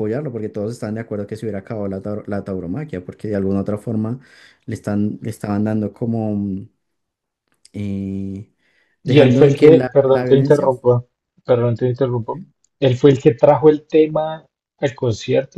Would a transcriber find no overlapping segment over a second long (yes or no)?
no